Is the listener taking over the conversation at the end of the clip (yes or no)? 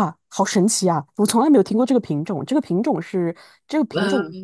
no